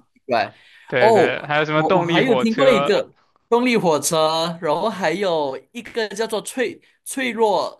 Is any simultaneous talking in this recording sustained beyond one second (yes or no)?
yes